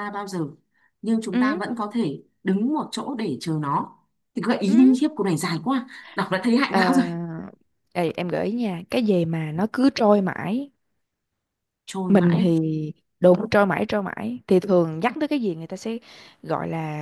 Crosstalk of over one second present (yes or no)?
no